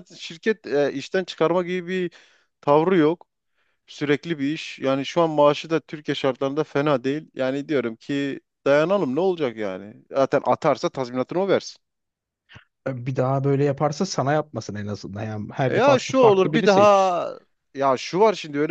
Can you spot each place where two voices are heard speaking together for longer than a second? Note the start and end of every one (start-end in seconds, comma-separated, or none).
15.7-17.1